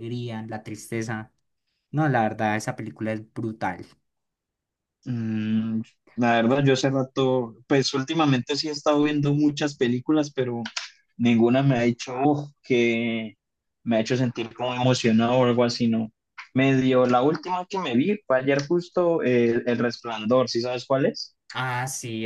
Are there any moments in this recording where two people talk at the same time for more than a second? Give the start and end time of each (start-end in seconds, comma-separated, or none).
none